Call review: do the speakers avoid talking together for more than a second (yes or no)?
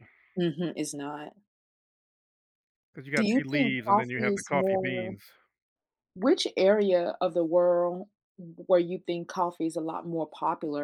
no